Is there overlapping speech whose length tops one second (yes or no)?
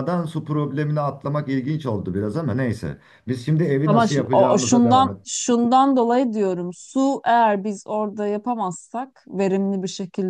yes